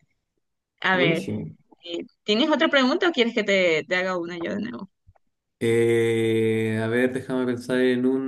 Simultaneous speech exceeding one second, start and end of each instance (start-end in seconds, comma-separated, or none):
none